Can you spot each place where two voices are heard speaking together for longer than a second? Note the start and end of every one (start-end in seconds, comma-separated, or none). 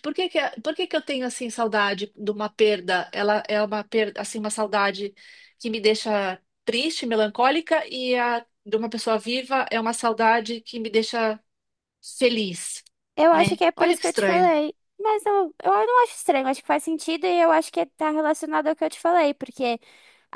13.3-14.6